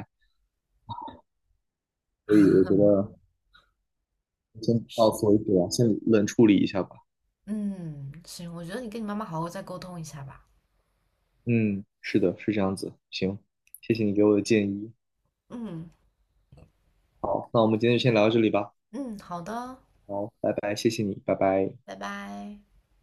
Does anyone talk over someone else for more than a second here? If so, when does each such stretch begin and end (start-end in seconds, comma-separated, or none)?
none